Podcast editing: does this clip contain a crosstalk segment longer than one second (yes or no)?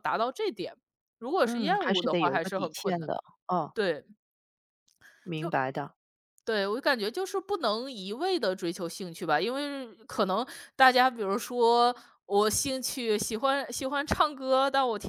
yes